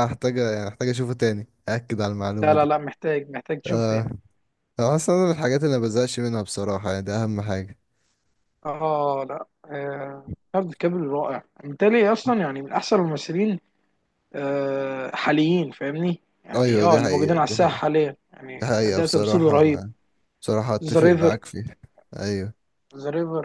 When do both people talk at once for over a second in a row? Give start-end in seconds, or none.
16.5-17.8, 18.6-19.8